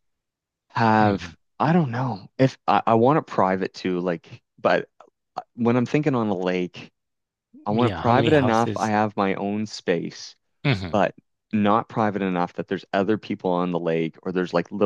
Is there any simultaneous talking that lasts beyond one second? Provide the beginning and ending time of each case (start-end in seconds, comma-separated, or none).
7.7-8.9